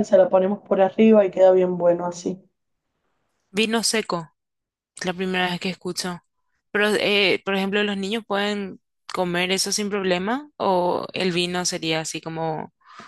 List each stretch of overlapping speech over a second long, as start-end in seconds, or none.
none